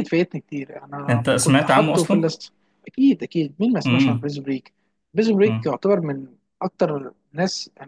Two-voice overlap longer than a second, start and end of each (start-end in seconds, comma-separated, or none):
1.1-2.3